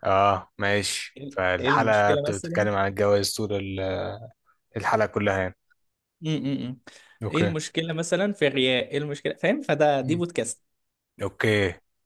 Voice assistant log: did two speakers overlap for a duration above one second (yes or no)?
yes